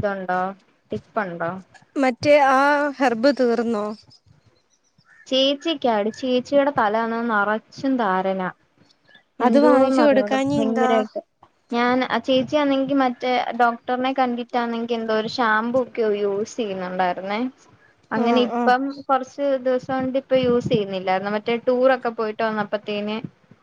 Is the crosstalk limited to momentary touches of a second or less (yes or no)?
no